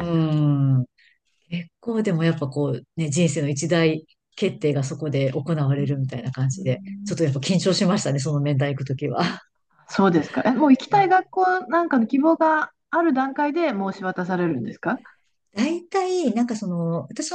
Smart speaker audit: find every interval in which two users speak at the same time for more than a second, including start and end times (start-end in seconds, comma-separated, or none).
none